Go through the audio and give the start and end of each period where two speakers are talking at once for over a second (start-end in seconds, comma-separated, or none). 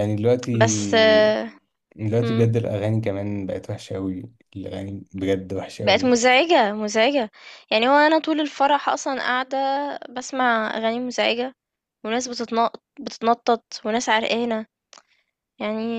none